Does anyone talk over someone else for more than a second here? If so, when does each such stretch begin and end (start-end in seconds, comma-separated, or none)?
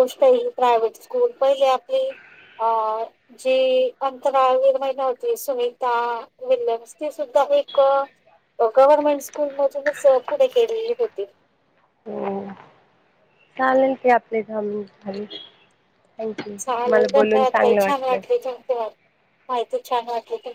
none